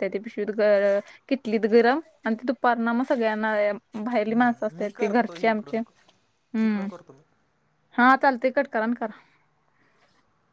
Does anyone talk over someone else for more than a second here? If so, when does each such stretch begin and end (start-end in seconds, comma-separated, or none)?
4.3-5.8